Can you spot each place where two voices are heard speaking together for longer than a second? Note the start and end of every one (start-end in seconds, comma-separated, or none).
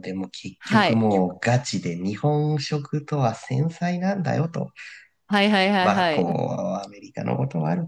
none